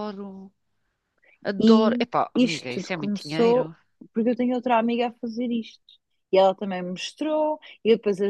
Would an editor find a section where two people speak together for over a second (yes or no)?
yes